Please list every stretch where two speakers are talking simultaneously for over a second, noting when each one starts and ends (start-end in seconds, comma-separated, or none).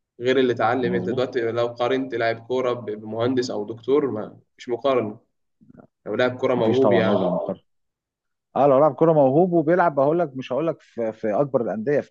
none